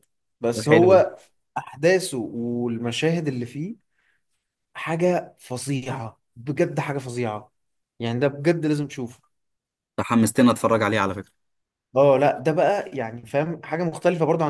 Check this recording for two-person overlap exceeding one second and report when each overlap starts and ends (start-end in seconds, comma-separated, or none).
none